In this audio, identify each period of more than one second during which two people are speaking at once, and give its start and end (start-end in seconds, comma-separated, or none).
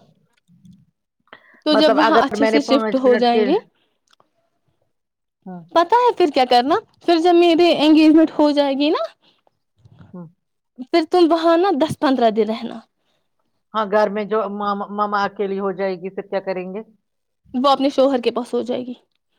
1.8-3.5